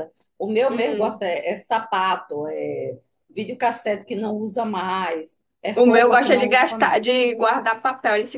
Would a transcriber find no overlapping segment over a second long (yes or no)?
no